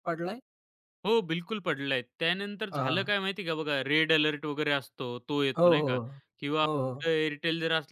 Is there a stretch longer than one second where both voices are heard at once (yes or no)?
no